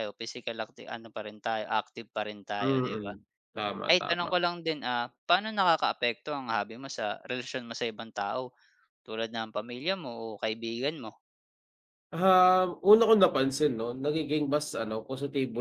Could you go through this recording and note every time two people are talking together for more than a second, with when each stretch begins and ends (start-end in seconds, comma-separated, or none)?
none